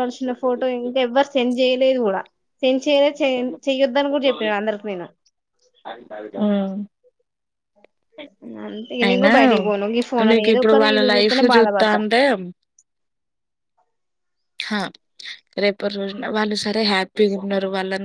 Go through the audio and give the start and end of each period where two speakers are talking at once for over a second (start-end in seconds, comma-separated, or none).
10.3-12.0